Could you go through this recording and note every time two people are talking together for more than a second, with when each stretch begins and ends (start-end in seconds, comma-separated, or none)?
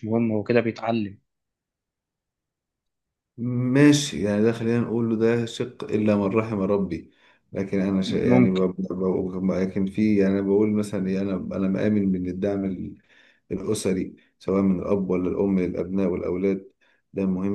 none